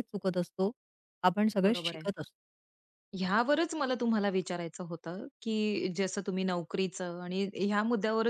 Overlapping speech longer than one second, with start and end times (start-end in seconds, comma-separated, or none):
none